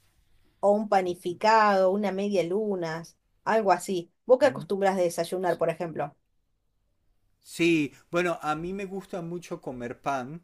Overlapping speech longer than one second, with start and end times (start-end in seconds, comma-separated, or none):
none